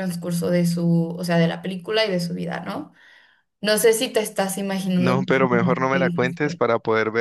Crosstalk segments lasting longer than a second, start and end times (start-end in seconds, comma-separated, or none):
5.0-6.6